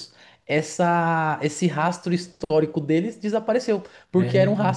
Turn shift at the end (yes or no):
no